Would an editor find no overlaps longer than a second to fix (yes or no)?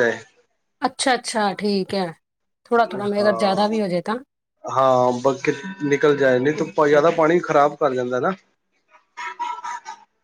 yes